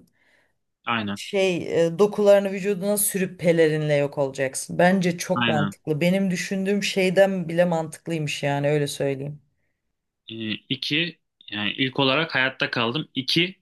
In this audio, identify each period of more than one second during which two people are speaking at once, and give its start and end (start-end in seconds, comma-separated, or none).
none